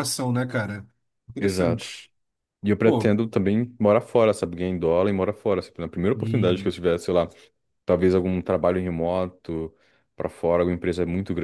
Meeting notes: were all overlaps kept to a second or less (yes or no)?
yes